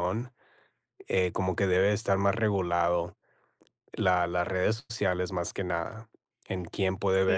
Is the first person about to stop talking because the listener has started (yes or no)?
yes